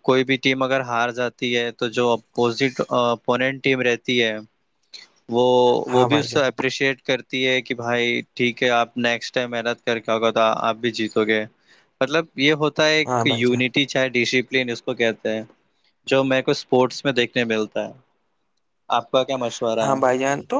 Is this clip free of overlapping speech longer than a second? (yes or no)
yes